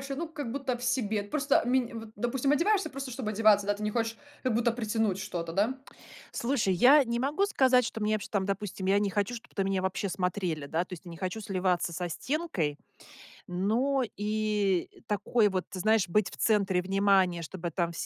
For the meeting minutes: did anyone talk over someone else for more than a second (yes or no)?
no